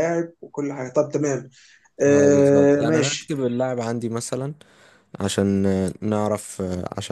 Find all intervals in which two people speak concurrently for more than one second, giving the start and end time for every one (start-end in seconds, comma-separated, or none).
2.0-3.4